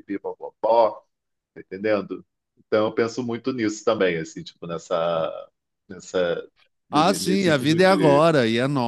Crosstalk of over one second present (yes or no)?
yes